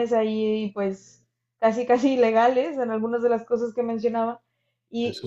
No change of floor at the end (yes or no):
yes